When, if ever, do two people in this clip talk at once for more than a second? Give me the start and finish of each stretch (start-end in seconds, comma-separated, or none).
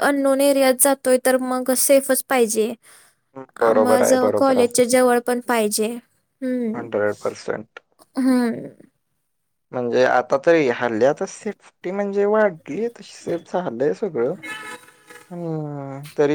none